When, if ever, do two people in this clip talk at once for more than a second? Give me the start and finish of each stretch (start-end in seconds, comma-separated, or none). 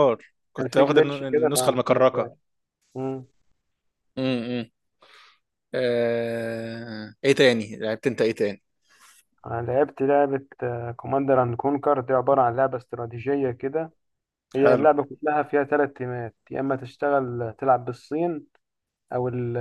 0.6-2.3